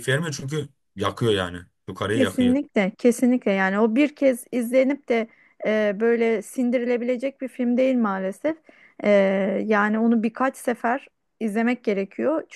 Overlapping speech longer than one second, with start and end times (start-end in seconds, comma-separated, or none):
none